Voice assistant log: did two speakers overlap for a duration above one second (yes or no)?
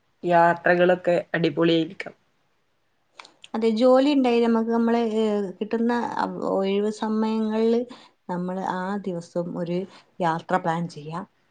no